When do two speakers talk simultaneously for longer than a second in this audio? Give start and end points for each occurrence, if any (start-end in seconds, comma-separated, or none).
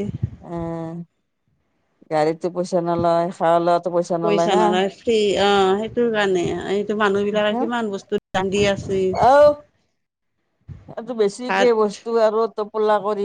none